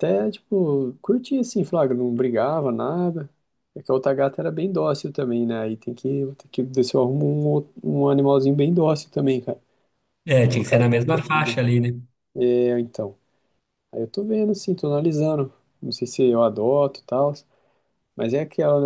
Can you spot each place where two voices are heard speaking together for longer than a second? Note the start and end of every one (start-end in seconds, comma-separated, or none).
10.3-11.6